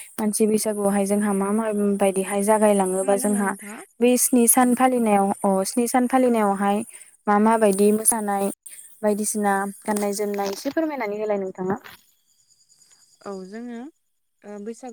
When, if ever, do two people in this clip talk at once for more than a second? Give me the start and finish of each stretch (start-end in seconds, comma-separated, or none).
none